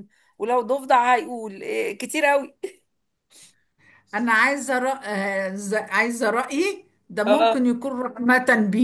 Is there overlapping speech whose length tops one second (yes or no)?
no